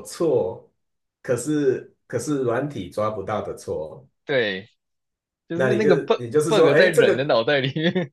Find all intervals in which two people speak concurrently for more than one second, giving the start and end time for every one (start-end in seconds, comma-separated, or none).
5.5-7.3